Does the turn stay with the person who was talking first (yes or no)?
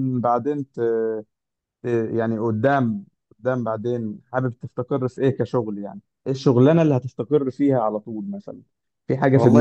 no